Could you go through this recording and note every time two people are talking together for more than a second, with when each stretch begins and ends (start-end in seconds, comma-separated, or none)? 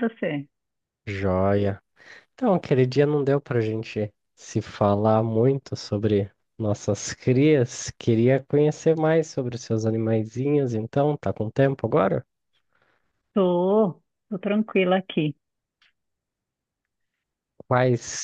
none